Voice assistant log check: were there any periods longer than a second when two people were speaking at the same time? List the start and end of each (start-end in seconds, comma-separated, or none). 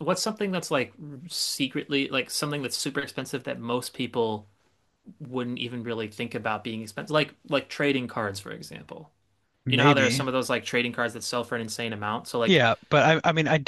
none